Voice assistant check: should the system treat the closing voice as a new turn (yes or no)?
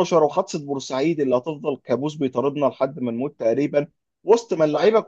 no